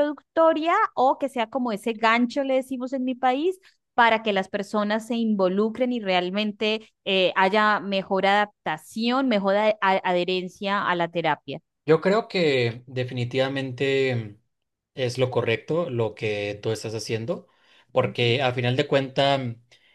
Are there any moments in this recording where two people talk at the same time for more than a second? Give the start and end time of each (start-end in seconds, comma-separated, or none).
none